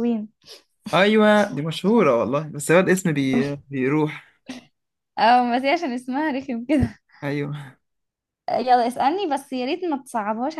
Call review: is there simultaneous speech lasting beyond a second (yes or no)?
no